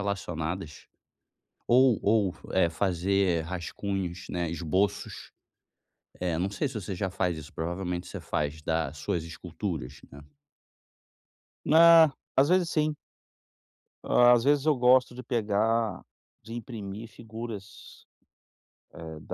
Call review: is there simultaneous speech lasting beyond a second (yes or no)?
no